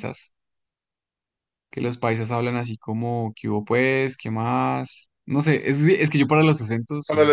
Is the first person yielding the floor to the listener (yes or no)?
yes